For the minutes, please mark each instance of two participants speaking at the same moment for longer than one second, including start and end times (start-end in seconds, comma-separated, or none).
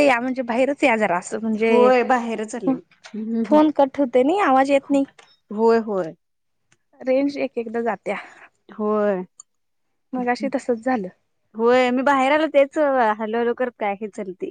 none